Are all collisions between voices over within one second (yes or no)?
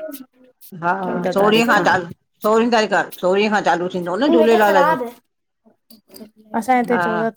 yes